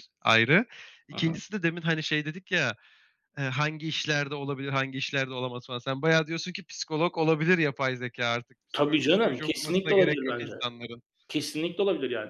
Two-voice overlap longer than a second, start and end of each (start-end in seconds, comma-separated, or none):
8.7-10.5